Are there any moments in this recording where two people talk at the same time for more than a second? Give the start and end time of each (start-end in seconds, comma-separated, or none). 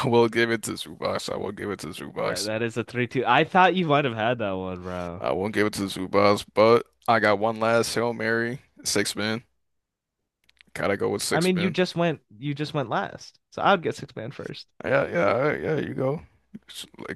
none